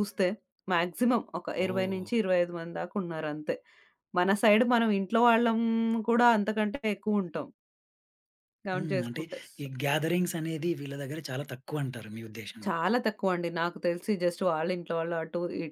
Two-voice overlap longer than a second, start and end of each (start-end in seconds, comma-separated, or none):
none